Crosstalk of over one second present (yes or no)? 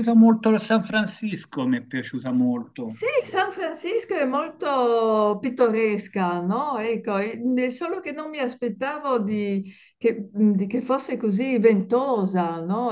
no